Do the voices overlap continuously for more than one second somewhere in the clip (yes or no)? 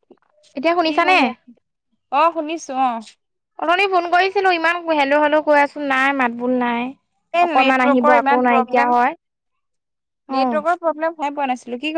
yes